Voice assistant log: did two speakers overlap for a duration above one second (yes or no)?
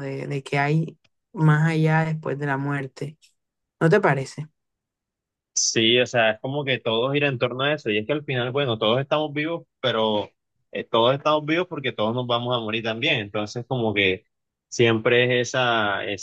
no